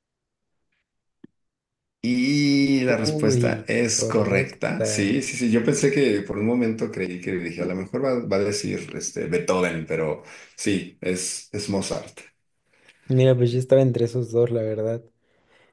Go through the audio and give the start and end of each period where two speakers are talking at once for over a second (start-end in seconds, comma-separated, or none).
3.1-5.2